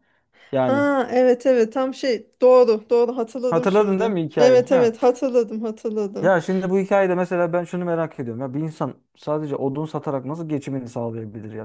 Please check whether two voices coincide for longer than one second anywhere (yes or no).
yes